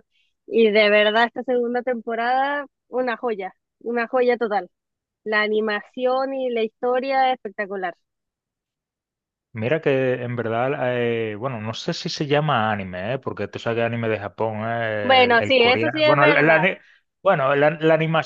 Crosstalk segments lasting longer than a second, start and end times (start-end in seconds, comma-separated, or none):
15.0-16.6